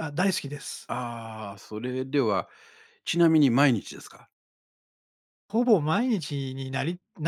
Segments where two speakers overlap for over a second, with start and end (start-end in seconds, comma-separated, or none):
none